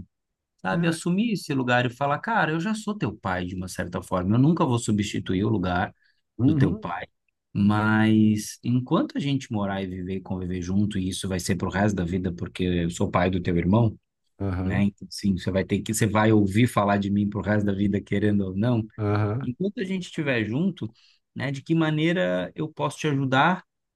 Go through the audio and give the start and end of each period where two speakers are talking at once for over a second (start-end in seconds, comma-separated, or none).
none